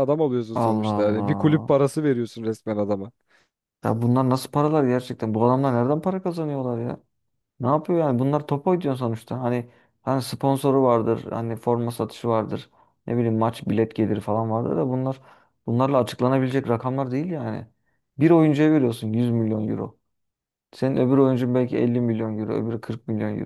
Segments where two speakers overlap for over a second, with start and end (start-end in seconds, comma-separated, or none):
0.5-1.8